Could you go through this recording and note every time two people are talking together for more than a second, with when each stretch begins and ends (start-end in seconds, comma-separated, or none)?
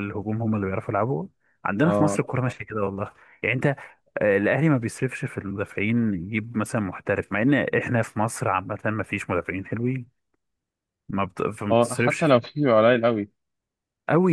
none